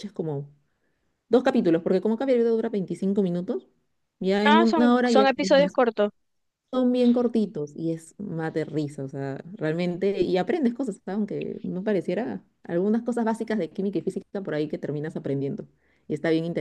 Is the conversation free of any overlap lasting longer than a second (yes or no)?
no